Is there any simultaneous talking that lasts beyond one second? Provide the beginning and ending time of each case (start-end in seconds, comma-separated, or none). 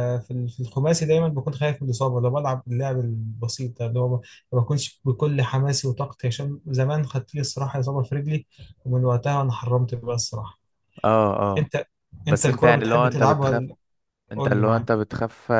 12.3-13.6